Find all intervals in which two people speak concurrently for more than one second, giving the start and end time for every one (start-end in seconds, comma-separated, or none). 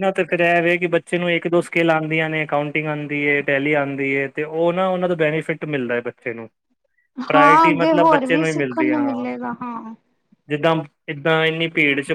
7.3-9.1